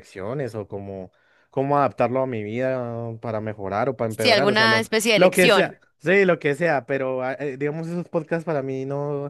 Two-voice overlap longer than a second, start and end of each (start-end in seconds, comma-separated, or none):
4.1-5.8